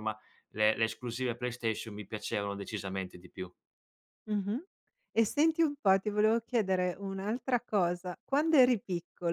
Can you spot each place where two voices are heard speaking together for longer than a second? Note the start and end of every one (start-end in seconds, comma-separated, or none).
none